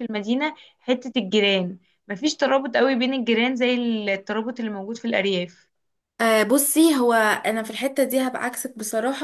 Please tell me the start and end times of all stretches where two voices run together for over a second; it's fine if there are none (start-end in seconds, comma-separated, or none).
none